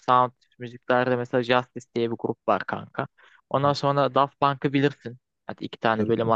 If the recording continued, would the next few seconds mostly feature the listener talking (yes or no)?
no